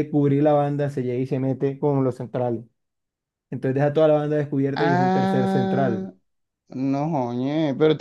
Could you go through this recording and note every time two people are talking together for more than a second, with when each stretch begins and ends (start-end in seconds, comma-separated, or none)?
4.7-6.1